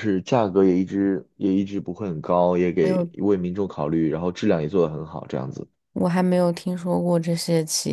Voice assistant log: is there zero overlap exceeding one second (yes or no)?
yes